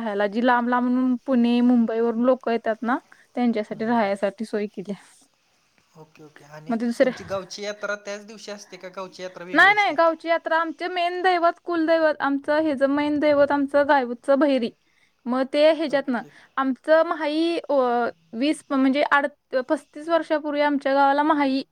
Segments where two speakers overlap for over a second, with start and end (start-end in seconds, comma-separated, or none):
none